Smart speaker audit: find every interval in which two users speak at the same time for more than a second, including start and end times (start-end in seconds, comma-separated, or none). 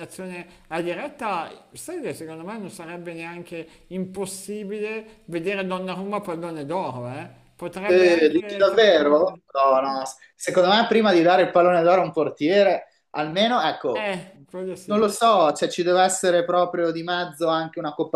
7.8-9.4